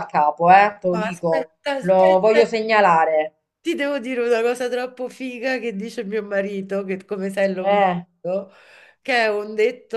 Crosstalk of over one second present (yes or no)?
yes